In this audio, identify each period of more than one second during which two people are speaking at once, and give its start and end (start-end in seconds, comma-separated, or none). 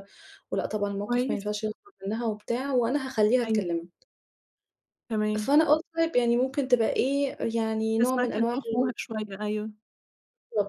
none